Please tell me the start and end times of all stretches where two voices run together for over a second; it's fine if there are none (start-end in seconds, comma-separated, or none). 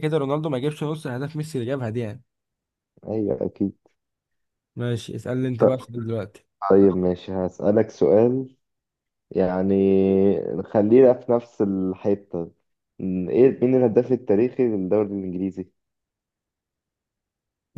none